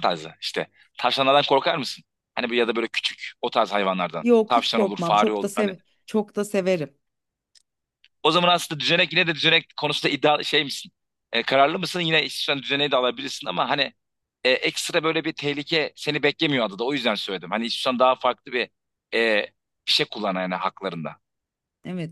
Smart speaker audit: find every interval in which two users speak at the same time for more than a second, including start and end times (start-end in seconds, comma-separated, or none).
4.2-5.7